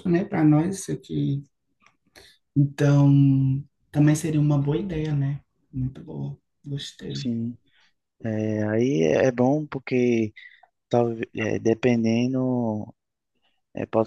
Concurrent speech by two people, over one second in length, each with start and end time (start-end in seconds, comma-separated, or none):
none